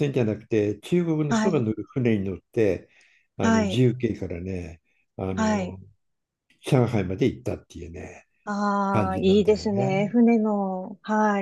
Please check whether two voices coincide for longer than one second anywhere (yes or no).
yes